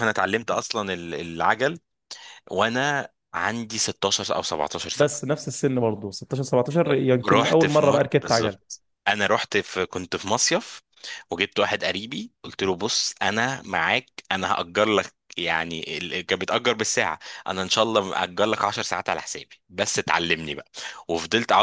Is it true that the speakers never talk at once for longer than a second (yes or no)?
no